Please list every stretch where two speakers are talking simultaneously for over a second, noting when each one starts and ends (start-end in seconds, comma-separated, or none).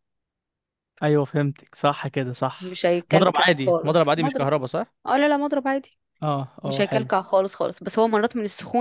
2.6-4.5